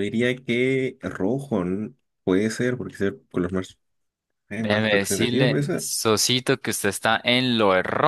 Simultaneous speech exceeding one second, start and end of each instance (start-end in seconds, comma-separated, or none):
4.6-5.9